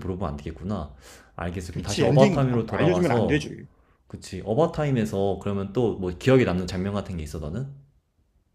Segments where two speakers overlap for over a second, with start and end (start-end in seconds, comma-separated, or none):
1.7-3.5